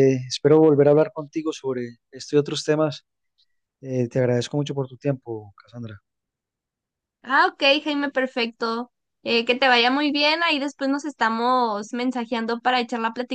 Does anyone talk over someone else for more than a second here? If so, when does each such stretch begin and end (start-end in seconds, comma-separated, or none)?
none